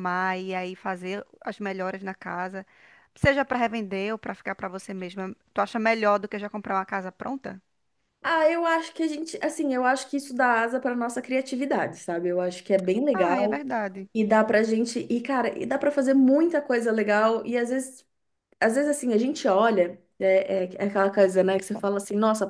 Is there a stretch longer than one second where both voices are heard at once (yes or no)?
no